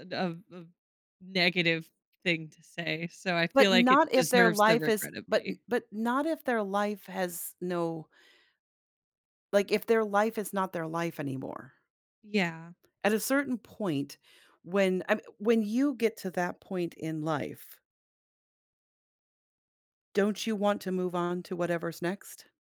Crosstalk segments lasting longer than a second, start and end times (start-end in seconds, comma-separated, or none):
3.5-5.6